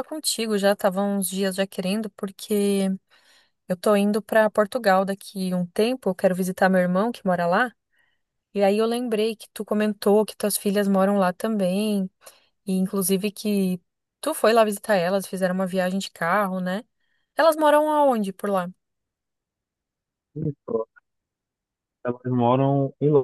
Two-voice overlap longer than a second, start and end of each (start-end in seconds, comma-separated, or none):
none